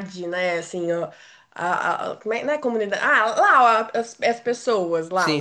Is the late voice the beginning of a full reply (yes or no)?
no